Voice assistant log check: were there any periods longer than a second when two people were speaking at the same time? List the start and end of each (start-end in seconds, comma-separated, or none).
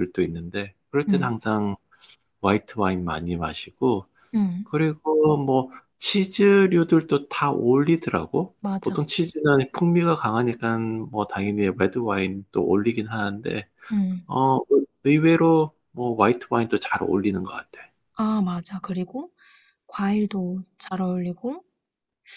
none